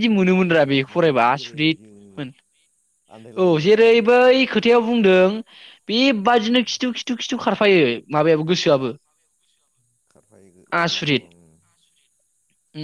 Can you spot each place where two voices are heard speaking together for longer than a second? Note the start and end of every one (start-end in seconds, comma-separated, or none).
0.7-2.1